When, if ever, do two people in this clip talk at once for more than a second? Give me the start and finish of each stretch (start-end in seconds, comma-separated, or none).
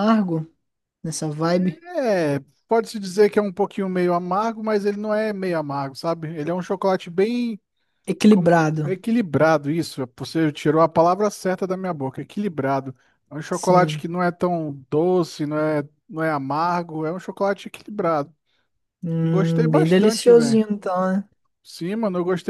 19.2-20.6